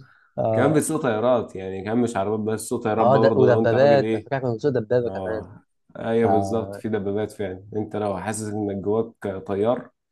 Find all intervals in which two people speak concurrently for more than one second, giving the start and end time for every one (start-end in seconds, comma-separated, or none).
3.0-4.3